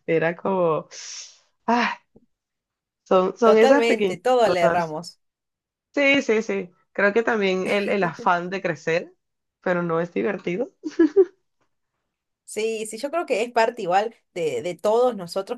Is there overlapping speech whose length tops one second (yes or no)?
yes